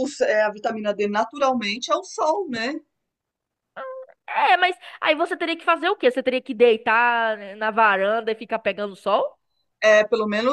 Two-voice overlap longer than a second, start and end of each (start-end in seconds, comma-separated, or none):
none